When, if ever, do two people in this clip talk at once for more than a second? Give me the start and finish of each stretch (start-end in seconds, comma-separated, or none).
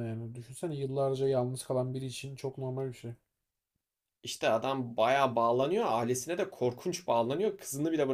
none